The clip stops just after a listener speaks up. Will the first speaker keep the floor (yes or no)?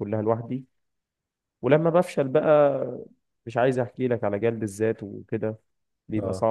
no